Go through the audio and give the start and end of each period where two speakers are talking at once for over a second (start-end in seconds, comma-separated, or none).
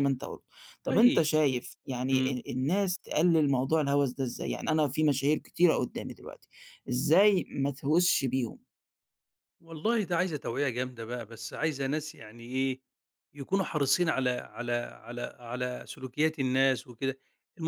none